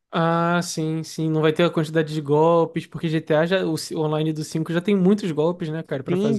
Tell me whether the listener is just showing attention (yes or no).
no